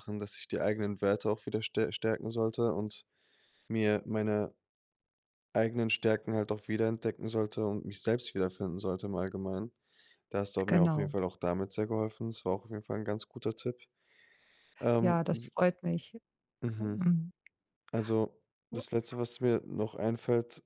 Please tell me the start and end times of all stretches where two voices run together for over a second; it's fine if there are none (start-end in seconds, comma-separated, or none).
none